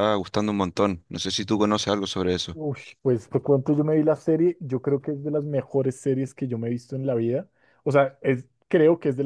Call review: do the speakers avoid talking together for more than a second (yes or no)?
yes